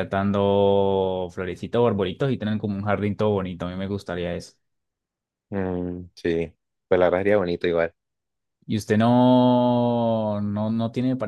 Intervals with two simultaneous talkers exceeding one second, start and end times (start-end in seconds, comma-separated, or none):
none